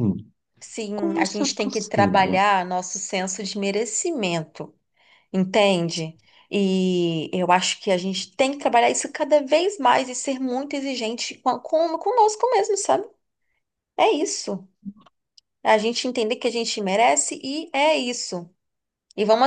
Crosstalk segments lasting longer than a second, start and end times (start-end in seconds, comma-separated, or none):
0.9-2.4